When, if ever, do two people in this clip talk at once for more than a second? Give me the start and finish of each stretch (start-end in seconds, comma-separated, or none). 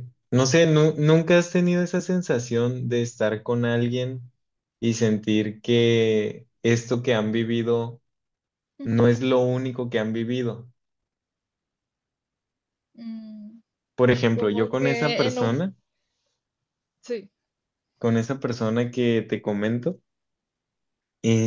14.3-15.5